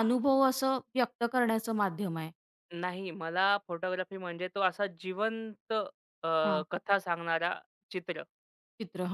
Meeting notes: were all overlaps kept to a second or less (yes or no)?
yes